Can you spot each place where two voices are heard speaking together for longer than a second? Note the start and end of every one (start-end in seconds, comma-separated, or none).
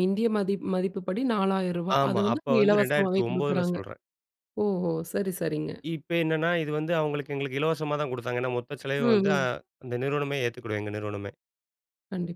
2.0-3.8